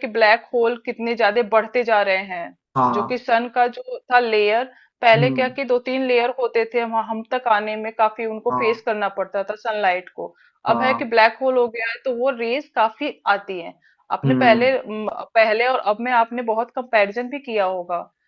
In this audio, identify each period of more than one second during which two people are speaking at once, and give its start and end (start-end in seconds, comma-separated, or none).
none